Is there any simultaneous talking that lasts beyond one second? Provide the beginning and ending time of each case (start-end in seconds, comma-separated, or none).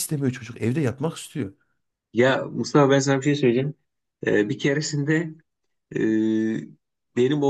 none